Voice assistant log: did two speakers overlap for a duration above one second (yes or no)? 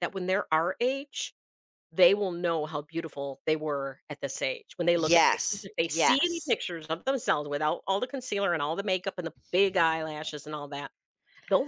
yes